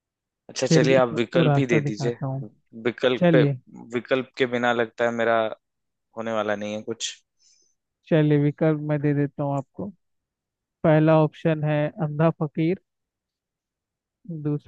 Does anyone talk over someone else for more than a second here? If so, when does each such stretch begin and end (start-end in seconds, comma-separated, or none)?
0.7-2.2